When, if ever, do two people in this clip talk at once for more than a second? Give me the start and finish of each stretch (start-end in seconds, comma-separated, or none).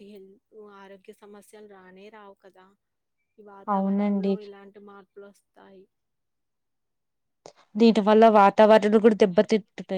none